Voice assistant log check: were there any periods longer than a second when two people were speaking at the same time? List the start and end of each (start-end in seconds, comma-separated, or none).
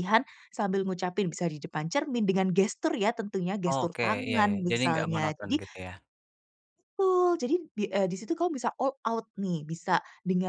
3.6-5.6